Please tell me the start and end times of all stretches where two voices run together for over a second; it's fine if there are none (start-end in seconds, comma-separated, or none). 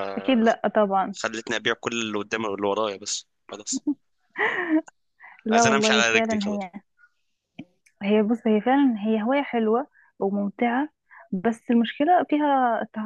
5.5-6.7